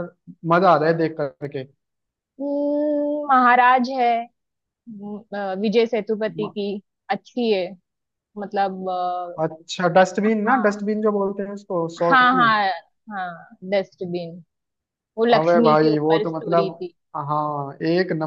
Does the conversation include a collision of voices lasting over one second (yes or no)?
yes